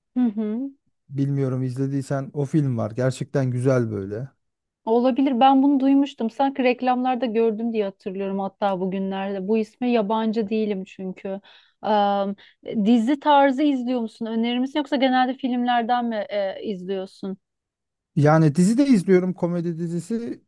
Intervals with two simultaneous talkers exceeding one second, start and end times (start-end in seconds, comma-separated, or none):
none